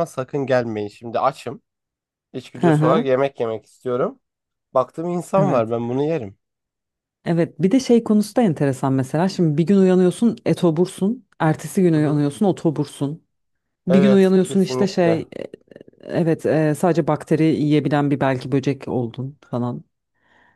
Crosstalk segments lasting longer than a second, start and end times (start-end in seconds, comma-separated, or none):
13.9-15.2